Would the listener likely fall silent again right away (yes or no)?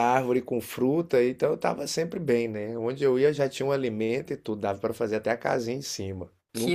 yes